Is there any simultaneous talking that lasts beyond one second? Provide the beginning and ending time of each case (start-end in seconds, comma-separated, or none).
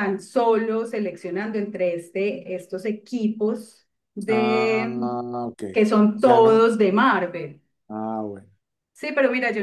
none